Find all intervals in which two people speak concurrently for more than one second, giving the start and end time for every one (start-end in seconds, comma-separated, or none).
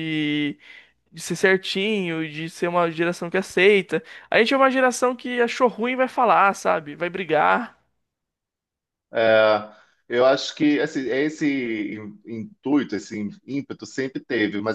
none